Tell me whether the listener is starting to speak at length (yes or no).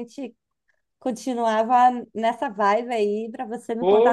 yes